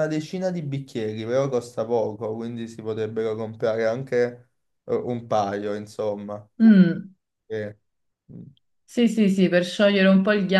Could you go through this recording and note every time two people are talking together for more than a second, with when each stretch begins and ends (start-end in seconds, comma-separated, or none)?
none